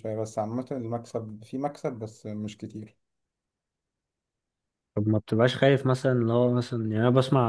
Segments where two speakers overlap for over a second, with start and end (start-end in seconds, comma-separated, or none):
none